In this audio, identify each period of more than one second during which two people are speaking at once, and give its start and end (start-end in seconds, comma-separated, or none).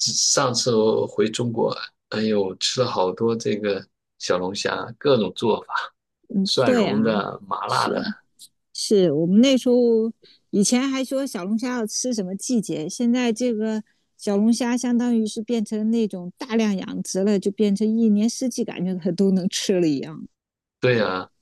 none